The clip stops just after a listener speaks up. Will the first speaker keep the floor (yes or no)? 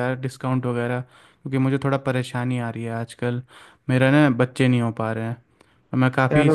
no